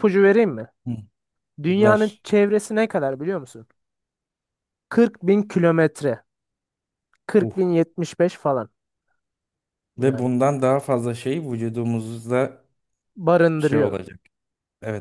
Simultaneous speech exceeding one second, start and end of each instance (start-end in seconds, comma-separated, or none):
none